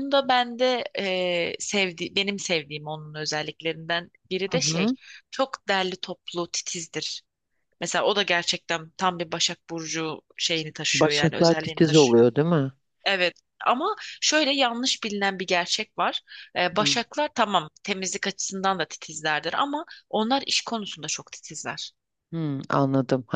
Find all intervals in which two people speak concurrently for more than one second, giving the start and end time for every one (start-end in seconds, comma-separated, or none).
10.9-12.3